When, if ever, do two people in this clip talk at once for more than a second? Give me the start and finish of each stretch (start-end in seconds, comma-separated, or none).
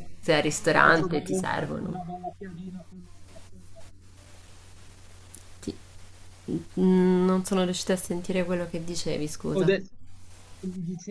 0.7-2.1